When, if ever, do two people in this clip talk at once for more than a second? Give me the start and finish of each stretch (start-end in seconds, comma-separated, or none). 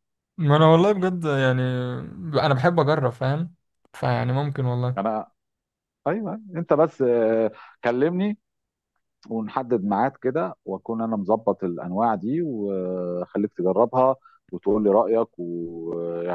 none